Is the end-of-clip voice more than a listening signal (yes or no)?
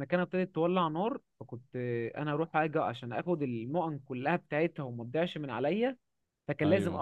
no